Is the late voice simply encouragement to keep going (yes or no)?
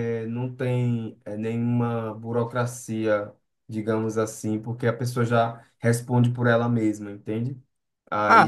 no